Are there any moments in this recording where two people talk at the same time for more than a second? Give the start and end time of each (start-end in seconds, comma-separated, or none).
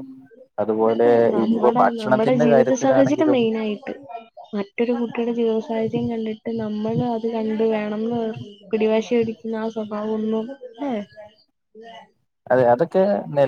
1.4-3.4